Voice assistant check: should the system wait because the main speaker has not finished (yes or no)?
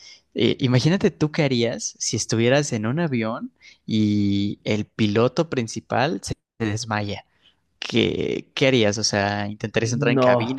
yes